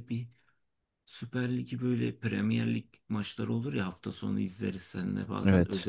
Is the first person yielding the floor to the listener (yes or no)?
no